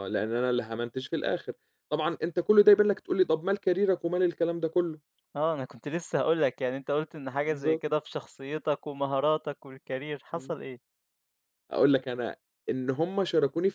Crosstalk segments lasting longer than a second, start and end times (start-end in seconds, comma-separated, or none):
none